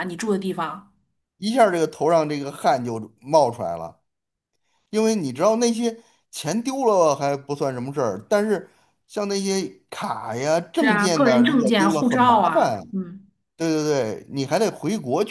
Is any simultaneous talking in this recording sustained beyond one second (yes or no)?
yes